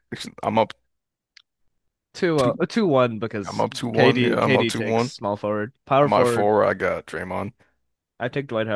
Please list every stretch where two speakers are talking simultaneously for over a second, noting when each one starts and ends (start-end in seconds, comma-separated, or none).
3.4-5.1